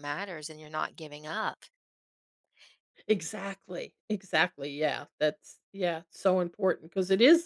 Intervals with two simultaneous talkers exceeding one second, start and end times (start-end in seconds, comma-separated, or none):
none